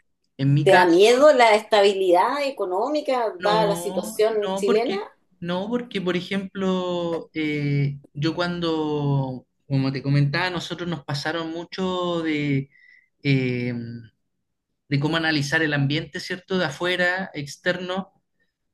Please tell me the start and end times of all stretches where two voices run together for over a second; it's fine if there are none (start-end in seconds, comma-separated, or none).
3.4-5.0